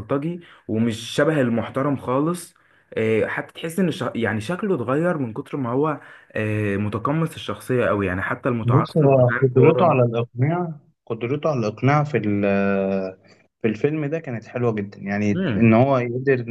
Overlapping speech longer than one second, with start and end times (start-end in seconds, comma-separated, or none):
8.6-10.0